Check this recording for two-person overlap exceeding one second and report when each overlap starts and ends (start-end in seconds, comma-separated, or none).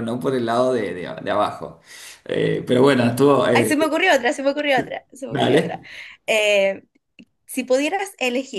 none